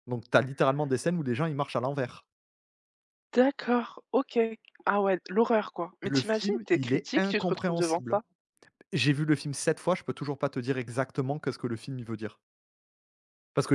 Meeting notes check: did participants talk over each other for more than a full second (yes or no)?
yes